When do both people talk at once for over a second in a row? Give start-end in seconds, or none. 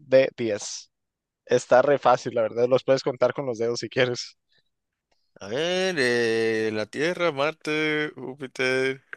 none